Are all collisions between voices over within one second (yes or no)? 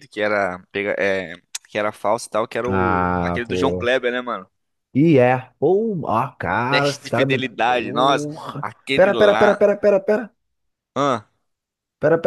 no